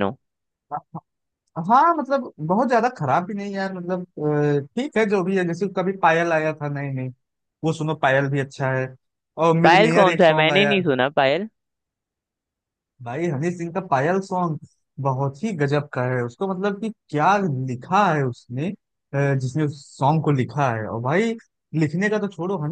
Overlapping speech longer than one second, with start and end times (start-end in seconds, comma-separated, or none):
9.6-10.9